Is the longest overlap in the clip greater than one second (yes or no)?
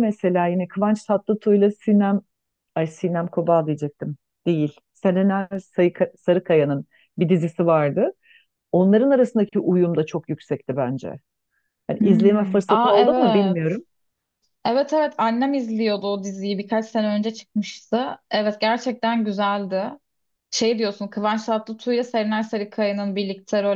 yes